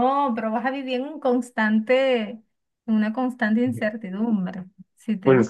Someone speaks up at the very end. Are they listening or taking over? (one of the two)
taking over